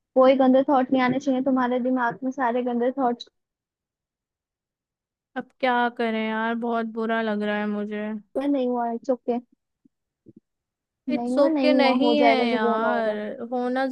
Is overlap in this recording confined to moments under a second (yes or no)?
no